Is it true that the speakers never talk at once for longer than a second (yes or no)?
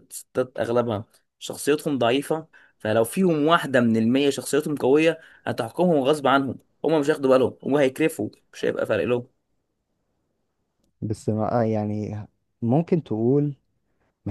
yes